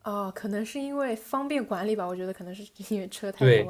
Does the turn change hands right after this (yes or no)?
yes